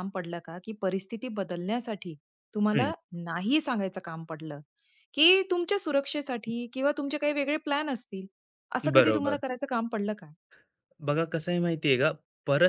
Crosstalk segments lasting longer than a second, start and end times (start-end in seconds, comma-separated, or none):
none